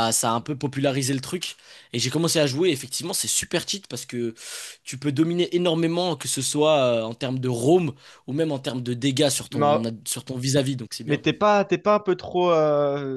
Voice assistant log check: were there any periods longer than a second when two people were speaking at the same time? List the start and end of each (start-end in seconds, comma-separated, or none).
none